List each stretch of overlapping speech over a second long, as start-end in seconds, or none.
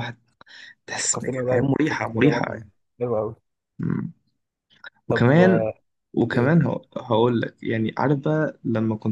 1.0-2.6